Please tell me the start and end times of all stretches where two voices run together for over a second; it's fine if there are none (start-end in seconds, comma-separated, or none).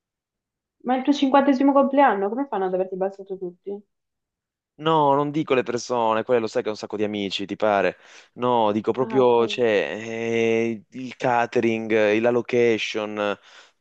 none